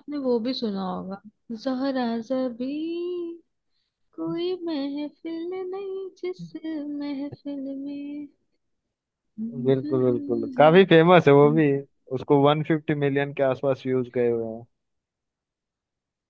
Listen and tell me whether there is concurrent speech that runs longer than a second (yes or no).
no